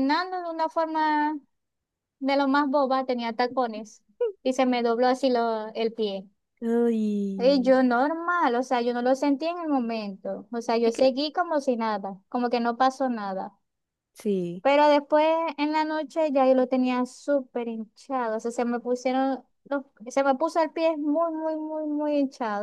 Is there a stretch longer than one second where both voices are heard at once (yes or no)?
no